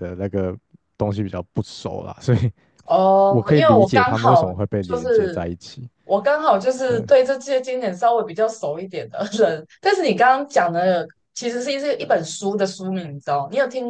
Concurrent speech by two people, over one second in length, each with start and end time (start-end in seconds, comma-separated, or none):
3.3-5.5